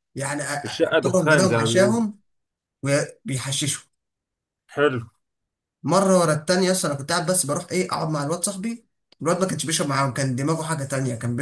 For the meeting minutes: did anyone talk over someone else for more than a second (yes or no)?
yes